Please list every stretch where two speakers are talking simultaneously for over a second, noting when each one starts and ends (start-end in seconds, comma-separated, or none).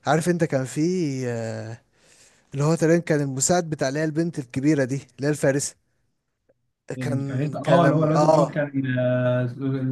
7.0-8.6